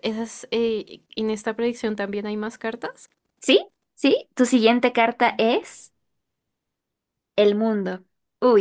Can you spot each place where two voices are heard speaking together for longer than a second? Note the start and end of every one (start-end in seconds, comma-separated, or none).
none